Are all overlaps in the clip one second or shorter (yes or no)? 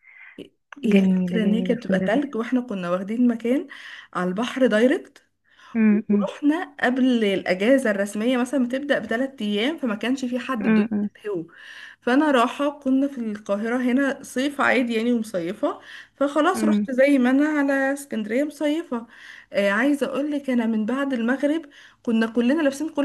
no